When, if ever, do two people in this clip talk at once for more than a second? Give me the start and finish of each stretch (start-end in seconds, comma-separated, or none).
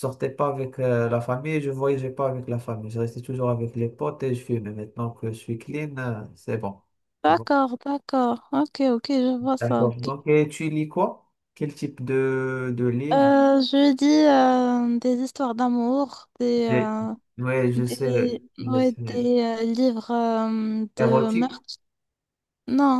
17.7-19.3